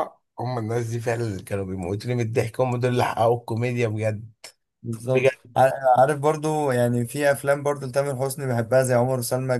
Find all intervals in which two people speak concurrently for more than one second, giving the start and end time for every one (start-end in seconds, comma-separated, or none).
none